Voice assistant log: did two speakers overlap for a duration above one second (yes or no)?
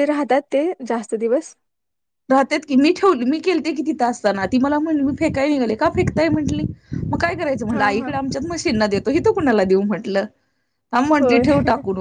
no